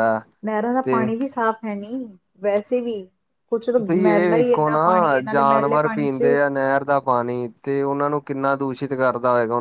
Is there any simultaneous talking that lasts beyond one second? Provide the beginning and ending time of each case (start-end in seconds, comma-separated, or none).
3.9-6.3